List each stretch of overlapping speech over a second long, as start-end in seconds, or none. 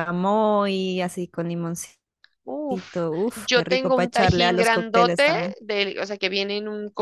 3.0-5.5